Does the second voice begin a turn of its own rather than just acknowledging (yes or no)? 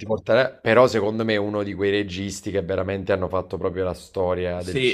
yes